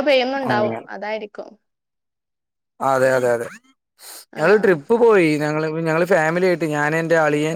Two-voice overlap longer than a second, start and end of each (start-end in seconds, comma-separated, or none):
none